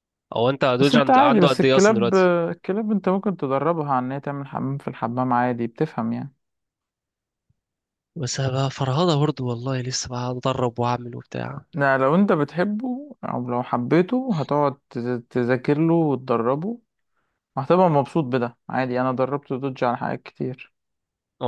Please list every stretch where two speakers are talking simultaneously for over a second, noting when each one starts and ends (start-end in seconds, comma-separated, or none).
0.8-2.1